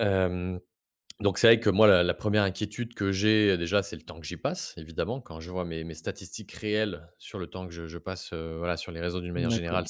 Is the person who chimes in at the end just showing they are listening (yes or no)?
no